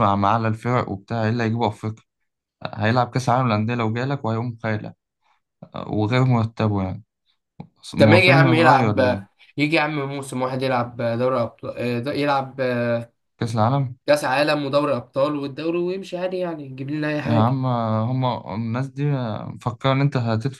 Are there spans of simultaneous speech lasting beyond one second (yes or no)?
yes